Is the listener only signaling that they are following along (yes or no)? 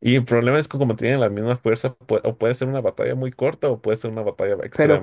no